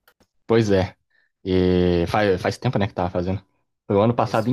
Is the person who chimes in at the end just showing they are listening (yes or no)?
yes